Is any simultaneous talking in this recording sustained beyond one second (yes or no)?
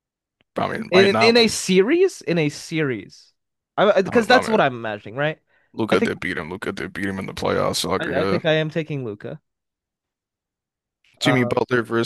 no